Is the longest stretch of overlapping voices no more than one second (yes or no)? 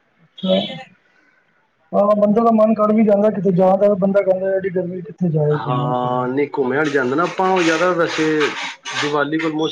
yes